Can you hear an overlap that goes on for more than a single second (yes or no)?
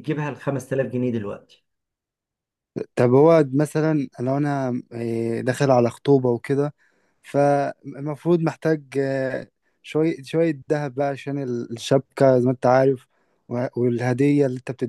no